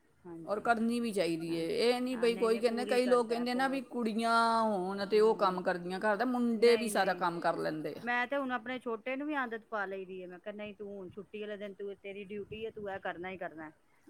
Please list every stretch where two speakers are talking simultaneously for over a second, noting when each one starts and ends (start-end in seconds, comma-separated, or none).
2.1-3.9